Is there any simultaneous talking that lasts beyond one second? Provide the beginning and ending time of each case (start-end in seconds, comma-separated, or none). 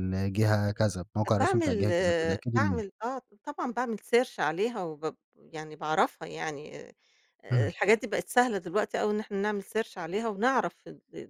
1.4-2.8